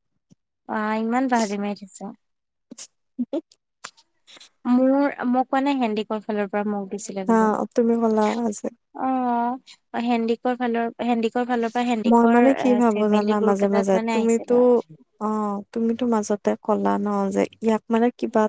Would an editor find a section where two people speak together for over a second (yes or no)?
yes